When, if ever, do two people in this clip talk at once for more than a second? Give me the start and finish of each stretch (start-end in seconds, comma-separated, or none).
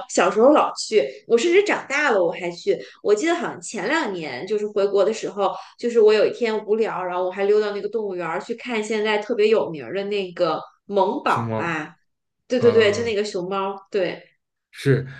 none